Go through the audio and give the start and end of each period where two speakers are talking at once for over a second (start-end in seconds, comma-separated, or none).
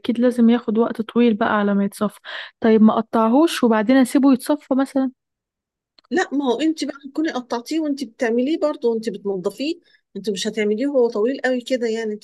none